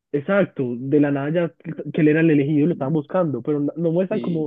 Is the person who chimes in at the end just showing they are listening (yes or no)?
yes